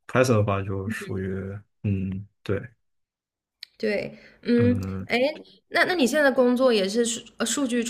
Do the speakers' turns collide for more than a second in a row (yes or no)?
no